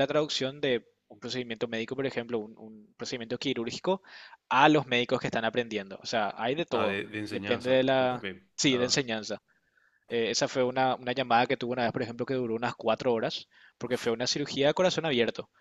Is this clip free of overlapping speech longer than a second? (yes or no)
no